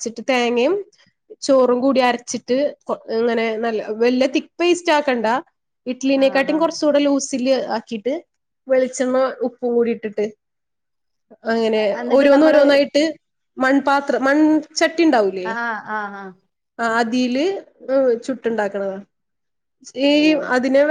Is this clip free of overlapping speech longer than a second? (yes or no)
yes